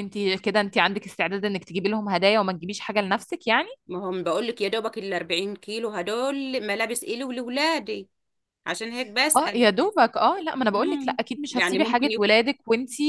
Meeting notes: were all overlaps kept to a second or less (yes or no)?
no